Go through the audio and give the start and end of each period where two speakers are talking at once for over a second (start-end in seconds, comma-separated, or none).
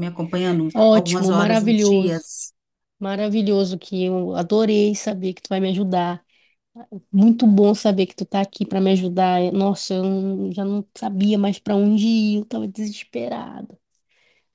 0.7-2.3